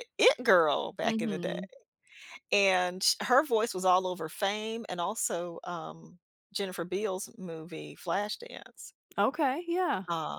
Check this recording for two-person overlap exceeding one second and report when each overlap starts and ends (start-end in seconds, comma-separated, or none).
none